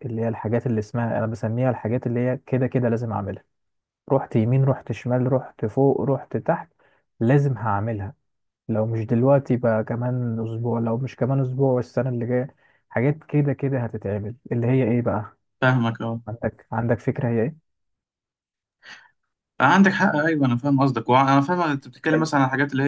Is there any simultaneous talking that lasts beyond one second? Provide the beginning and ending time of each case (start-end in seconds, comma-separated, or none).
none